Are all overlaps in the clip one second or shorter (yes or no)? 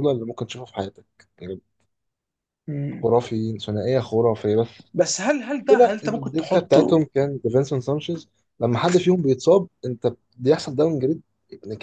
no